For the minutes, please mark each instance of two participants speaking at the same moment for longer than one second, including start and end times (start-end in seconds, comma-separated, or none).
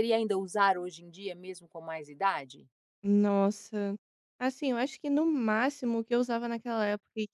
none